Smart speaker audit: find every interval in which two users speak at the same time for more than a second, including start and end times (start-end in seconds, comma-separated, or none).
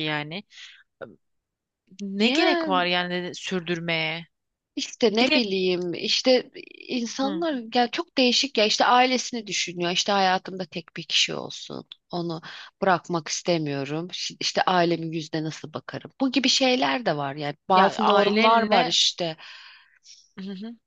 17.7-18.9